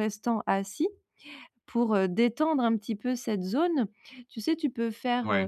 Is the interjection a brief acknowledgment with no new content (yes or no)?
yes